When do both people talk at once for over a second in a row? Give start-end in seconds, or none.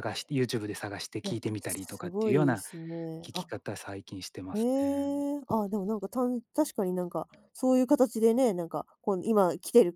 1.2-2.6